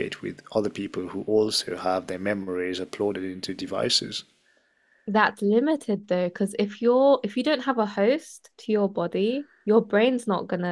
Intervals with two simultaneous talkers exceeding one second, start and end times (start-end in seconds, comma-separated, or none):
none